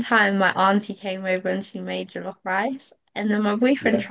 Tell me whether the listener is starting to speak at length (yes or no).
no